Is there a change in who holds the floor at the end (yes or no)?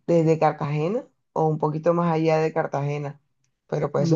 yes